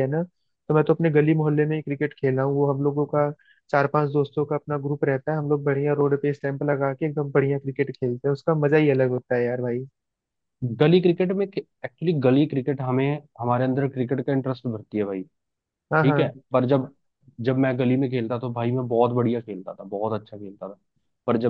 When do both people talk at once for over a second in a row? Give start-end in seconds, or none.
none